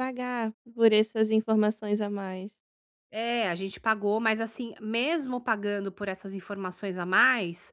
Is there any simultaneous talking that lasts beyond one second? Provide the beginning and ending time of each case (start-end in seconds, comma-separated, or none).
none